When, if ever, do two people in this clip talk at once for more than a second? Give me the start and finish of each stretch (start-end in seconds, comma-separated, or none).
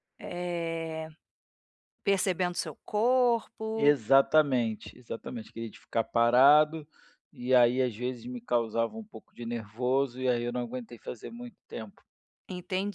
none